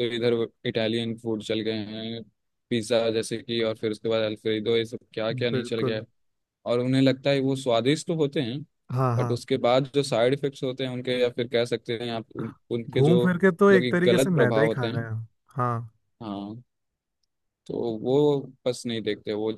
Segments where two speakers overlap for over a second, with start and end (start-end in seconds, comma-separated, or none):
12.9-15.1